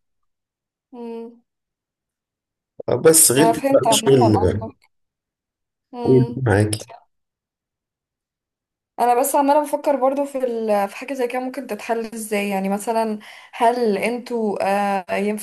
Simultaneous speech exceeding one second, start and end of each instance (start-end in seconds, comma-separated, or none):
3.4-4.7